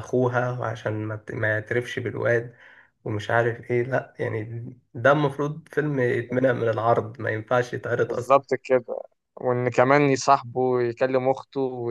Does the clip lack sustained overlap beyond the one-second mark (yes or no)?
yes